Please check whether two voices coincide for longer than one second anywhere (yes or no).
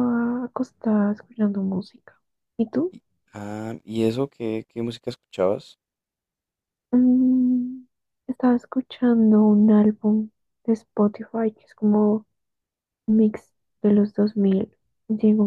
no